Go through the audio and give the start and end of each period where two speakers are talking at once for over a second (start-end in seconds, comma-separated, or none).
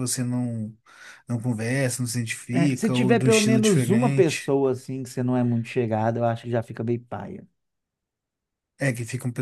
2.5-4.5